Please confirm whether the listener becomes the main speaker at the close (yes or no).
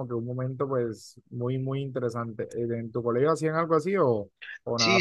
yes